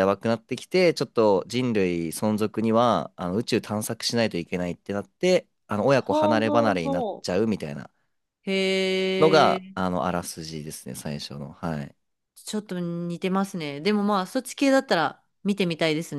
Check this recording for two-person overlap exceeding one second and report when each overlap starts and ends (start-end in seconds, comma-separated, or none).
6.0-7.2